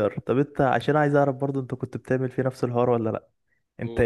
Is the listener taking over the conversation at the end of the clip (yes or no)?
no